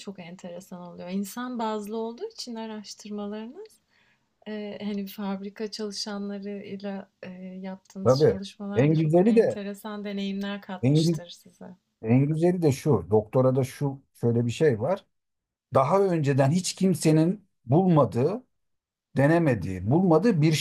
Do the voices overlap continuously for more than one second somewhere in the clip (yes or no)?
yes